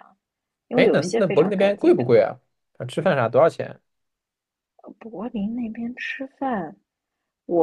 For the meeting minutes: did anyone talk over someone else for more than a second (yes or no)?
yes